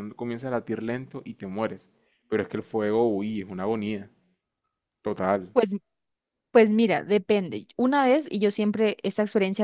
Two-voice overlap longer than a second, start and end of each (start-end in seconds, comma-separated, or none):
none